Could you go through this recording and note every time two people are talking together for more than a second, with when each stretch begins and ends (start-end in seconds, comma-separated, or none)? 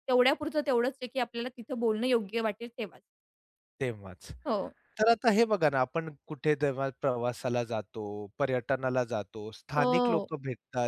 none